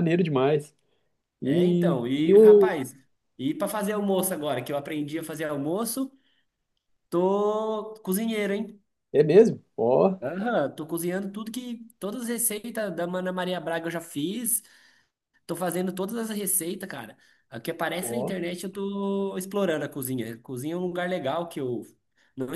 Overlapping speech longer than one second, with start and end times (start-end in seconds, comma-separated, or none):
1.4-2.8